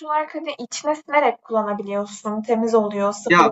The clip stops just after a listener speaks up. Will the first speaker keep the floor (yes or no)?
no